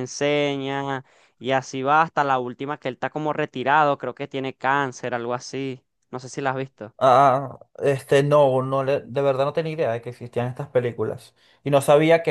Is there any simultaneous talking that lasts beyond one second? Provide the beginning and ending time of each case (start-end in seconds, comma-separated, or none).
none